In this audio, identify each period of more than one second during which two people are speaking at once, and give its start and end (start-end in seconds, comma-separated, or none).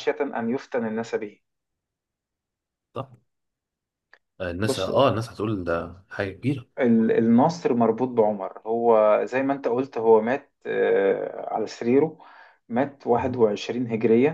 none